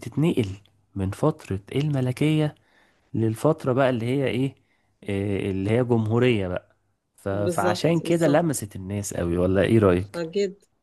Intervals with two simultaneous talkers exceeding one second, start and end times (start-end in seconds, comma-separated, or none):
7.3-8.7